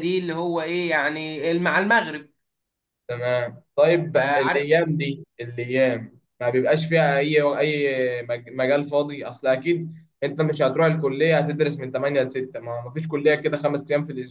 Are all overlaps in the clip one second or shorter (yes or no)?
yes